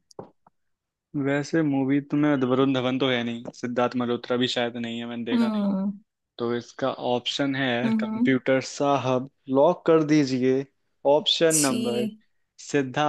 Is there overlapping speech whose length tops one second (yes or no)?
no